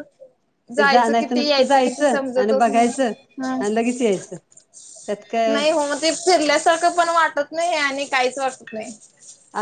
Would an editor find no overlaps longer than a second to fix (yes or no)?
no